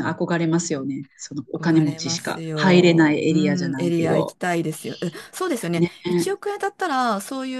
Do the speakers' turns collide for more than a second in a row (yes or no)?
yes